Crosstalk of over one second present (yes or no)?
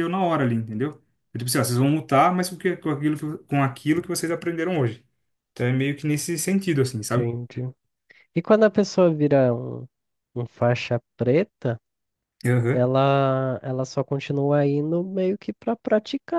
no